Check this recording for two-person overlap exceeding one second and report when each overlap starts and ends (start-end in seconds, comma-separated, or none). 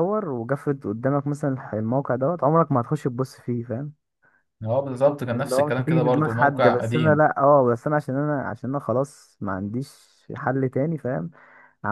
5.3-7.2